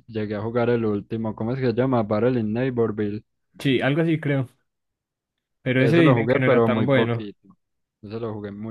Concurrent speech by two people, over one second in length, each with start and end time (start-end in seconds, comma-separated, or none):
5.8-7.3